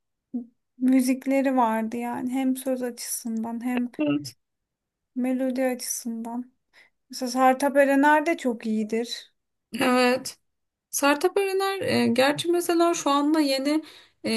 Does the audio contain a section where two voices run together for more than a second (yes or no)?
no